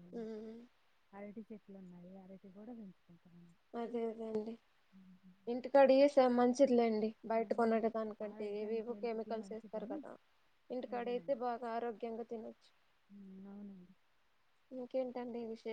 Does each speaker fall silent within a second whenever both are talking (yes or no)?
no